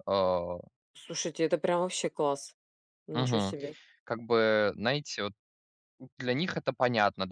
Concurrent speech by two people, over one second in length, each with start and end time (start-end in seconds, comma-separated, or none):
none